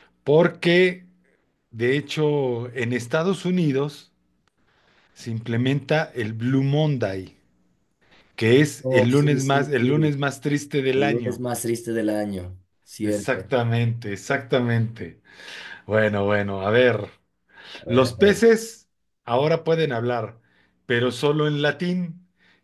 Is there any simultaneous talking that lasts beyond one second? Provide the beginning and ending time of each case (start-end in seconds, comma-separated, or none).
8.8-10.1